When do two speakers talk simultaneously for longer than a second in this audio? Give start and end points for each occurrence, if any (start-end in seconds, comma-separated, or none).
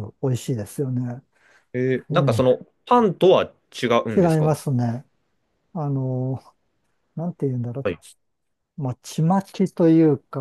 none